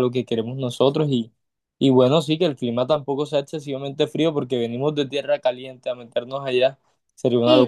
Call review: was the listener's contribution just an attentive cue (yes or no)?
no